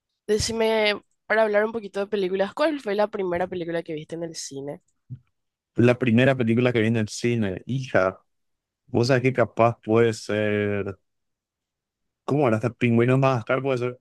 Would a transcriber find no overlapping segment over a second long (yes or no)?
yes